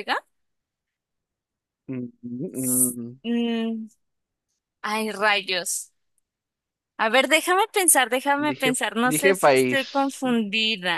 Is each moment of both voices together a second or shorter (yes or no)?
no